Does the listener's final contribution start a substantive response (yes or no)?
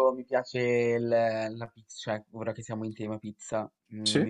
no